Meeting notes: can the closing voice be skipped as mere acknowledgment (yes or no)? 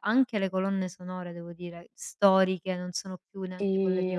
no